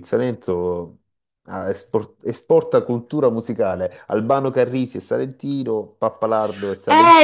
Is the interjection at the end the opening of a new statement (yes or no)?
yes